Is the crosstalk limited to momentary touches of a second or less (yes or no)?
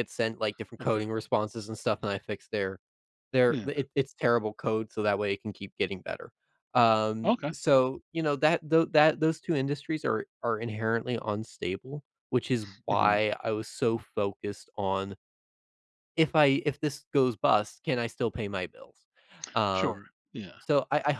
yes